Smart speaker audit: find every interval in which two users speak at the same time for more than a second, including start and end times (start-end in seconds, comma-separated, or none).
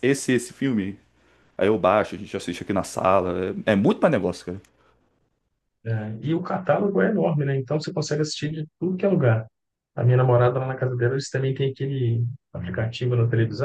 none